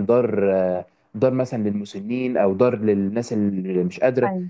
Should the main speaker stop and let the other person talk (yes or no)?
no